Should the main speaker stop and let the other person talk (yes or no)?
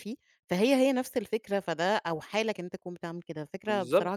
yes